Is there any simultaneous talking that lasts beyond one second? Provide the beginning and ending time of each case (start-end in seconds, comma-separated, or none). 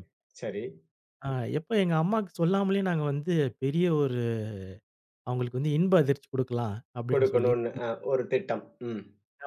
none